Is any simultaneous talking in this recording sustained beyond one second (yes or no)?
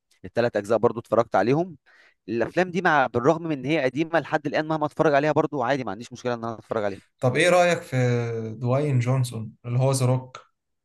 no